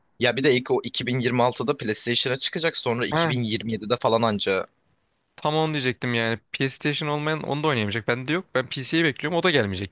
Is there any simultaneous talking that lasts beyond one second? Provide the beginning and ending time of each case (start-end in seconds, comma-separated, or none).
none